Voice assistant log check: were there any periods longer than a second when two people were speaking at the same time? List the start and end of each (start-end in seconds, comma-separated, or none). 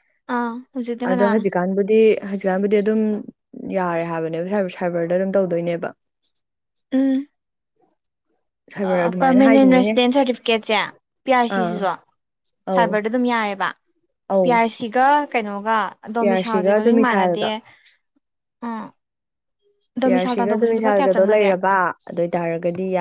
16.2-17.5, 20.0-21.5